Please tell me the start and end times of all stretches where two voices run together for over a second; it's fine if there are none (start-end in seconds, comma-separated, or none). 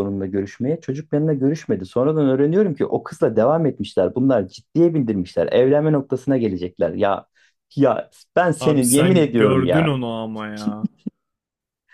8.6-10.0